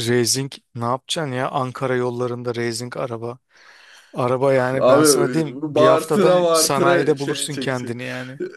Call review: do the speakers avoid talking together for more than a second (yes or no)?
no